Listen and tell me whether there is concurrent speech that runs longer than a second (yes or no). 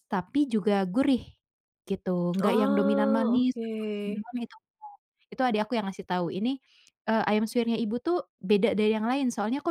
yes